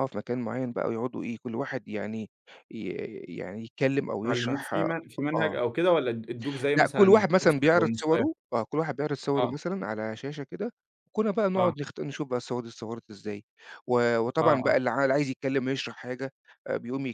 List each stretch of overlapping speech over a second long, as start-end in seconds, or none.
6.7-8.2